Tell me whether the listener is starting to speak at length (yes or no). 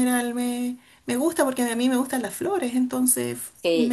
yes